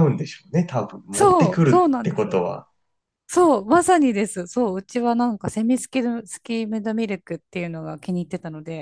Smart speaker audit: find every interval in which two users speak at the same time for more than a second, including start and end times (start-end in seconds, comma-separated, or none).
1.1-2.5